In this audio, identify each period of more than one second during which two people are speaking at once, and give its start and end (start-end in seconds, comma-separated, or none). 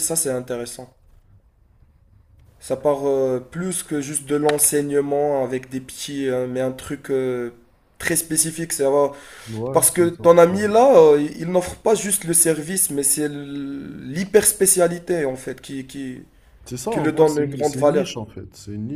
16.9-18.1